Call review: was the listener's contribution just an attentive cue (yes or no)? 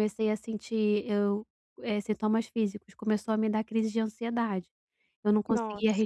yes